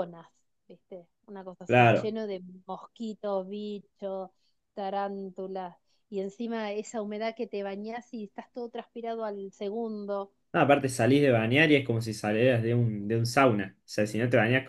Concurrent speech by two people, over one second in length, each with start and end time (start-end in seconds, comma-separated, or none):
none